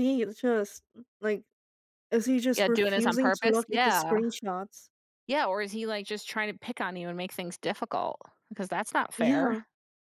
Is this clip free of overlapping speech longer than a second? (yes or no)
no